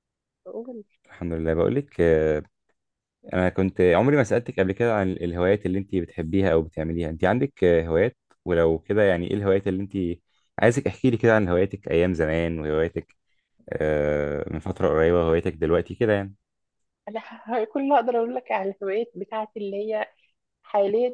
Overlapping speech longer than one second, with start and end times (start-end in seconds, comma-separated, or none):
none